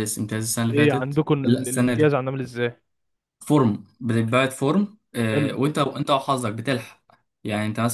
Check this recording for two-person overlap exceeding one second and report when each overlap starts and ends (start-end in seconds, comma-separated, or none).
0.6-2.2